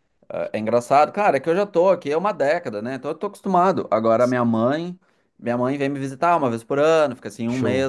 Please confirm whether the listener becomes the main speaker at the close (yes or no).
no